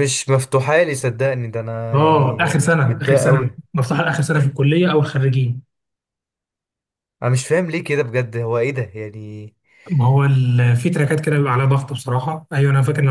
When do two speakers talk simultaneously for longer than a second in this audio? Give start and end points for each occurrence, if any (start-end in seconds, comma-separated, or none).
1.9-3.6